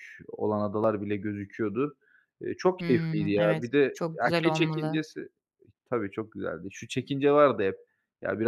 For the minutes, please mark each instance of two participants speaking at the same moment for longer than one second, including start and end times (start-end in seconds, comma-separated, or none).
2.8-5.0